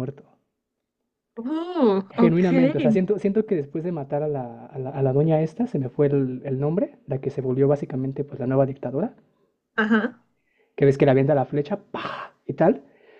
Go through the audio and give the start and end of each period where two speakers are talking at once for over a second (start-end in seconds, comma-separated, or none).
none